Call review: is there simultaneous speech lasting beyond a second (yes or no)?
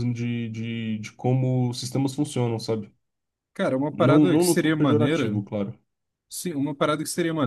yes